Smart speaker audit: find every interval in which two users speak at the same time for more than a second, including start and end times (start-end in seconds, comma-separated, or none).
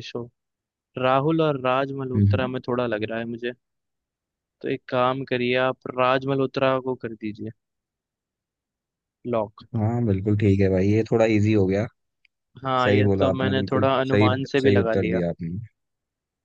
12.8-15.2